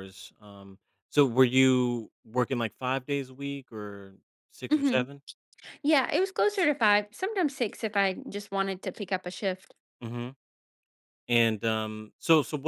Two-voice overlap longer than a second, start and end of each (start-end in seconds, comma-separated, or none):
none